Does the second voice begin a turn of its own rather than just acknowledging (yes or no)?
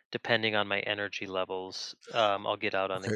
yes